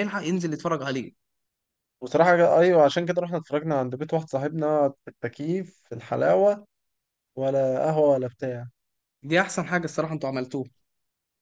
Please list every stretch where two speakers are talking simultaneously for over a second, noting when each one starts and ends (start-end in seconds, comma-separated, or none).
none